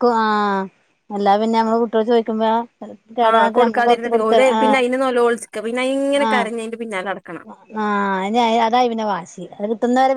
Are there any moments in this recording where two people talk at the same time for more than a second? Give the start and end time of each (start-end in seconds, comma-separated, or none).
3.3-4.8